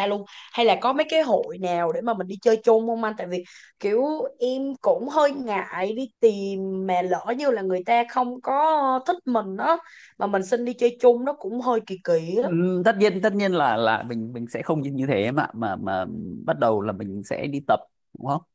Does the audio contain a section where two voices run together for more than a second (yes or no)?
no